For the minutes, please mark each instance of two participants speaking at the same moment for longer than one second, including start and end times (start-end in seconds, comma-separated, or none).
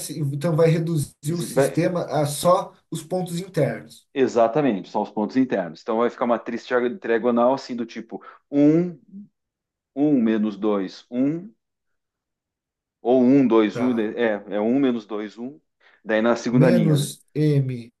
none